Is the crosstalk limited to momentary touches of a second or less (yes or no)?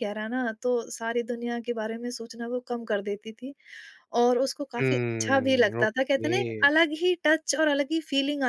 no